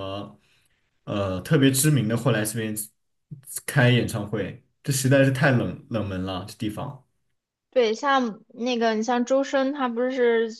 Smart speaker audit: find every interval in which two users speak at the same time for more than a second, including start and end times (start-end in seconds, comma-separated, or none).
none